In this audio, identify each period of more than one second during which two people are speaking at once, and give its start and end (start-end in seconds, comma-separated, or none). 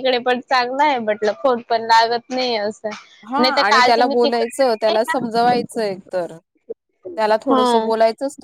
none